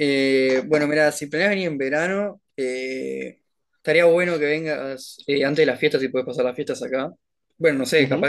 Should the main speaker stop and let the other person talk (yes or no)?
yes